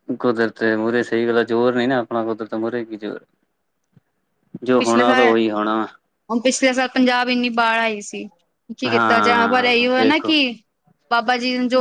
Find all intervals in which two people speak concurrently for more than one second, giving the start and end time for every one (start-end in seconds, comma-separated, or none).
8.9-10.3